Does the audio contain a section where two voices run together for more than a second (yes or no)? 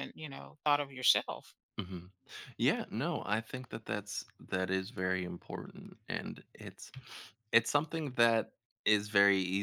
no